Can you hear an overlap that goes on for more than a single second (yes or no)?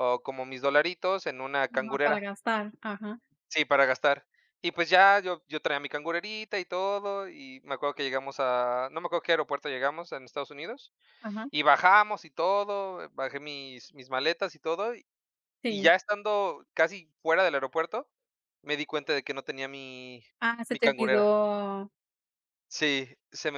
no